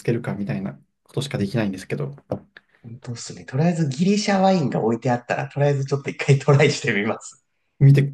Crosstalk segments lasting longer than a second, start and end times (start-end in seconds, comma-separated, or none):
none